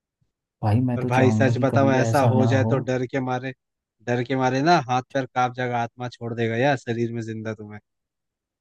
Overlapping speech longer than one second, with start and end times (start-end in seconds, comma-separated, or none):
1.0-2.7